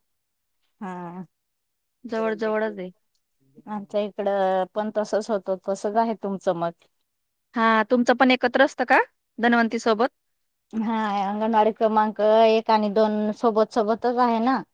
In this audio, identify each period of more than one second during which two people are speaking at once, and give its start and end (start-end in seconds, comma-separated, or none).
none